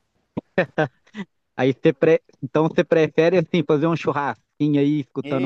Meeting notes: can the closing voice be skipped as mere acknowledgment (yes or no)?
no